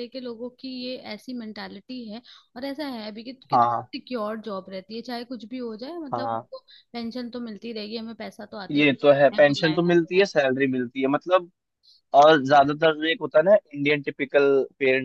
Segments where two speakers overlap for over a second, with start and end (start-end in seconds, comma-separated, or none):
8.7-10.3